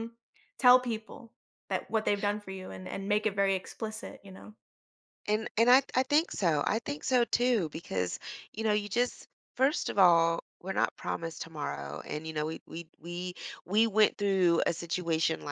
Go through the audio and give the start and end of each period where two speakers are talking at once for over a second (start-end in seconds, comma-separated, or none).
none